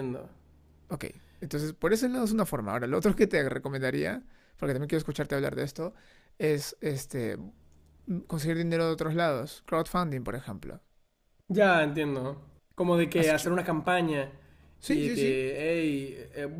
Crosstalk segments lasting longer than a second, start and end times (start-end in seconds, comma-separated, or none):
none